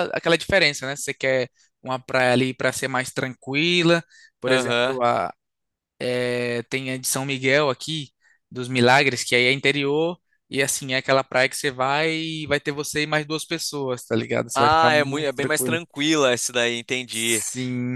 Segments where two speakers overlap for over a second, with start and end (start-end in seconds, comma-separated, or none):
14.5-15.8